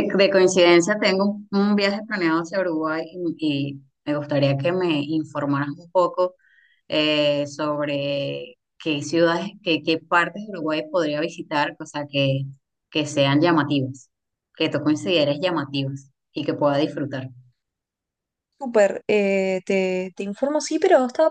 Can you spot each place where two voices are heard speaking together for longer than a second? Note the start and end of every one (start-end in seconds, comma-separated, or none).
none